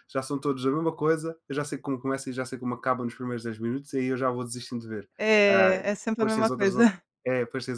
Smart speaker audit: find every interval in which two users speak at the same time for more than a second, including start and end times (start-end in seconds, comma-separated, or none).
5.5-7.0